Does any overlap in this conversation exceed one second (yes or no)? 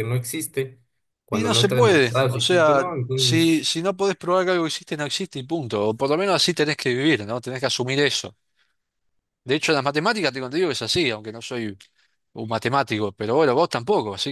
yes